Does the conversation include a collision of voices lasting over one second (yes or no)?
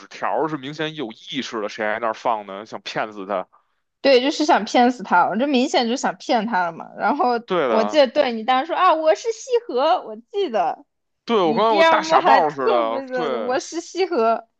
yes